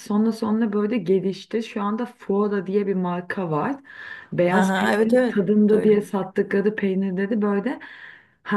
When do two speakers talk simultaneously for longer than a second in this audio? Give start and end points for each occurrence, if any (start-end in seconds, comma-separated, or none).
4.5-6.2